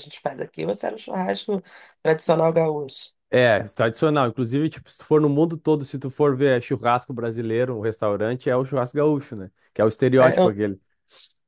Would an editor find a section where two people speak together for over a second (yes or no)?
no